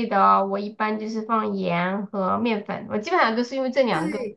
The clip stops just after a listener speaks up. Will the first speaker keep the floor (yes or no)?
no